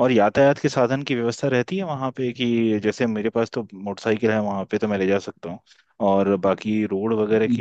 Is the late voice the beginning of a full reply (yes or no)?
no